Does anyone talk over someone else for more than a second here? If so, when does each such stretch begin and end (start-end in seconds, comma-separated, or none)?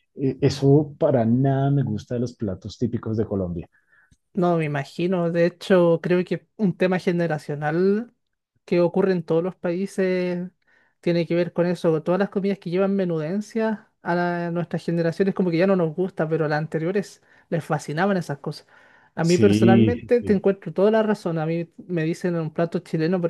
19.2-20.4